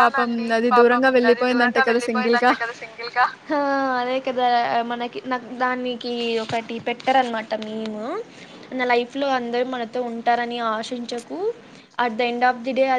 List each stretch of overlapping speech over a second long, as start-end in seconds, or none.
none